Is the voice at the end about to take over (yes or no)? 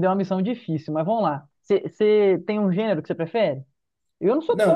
yes